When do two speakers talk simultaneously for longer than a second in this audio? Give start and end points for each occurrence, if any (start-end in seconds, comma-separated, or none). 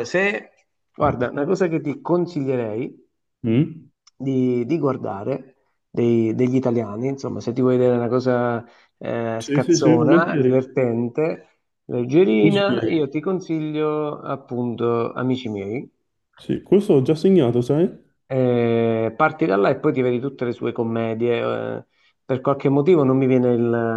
9.4-10.6